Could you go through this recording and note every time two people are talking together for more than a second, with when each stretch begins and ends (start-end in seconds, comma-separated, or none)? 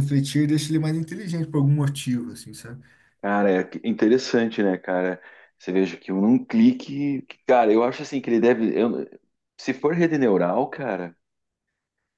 none